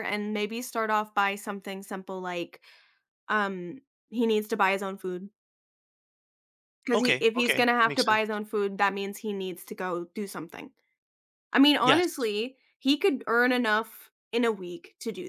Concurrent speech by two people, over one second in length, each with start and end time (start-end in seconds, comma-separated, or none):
6.9-8.4